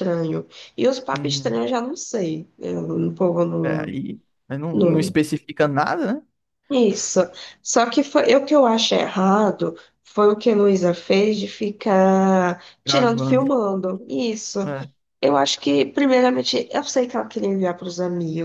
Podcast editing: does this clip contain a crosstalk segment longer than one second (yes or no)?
no